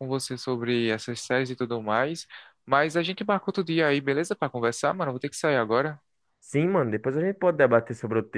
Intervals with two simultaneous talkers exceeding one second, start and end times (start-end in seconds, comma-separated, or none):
none